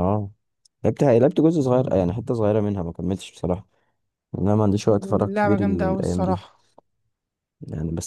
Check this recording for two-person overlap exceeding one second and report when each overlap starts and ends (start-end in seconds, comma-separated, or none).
5.0-6.4